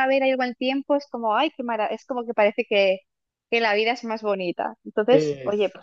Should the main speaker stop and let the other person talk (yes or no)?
no